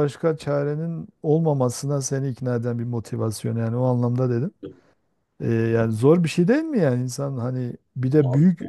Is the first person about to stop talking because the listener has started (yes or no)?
no